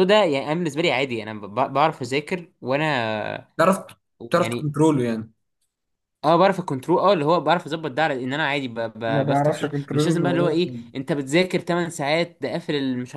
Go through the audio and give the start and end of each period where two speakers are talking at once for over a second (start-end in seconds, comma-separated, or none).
9.1-10.9